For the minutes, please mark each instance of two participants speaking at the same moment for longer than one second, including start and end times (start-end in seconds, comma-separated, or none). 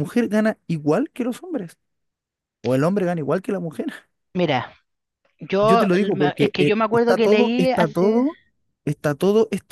5.6-8.2